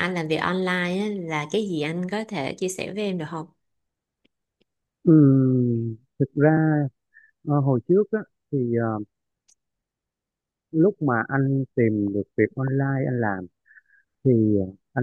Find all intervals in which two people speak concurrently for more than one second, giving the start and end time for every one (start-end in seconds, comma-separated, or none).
none